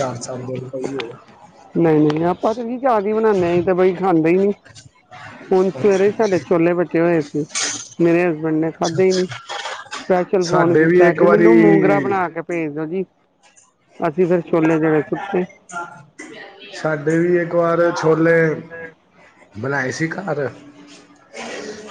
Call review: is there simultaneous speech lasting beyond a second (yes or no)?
yes